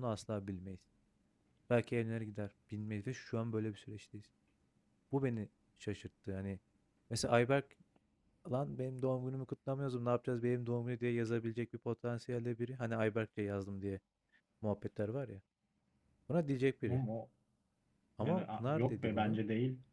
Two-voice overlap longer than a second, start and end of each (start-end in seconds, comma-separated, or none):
18.2-19.4